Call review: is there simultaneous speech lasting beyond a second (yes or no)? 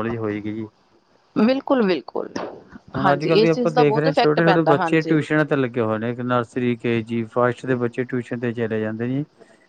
yes